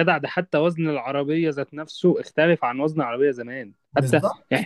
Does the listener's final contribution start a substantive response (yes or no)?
no